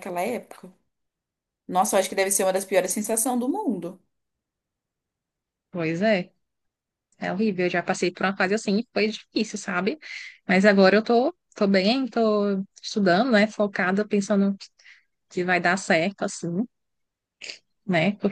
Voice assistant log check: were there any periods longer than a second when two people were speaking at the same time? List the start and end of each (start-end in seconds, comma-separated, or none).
none